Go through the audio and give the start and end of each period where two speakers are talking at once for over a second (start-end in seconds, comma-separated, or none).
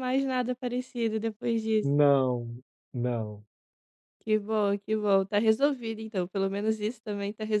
none